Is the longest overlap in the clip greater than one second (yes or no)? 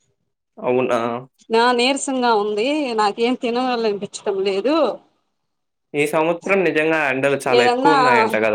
no